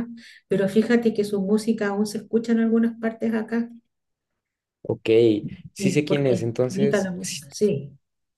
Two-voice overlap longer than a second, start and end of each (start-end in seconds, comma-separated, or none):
5.8-7.4